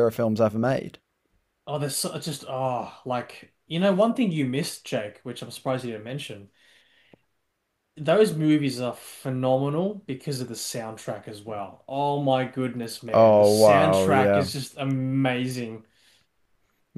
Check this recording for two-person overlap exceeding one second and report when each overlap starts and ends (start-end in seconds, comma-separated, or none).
13.1-14.5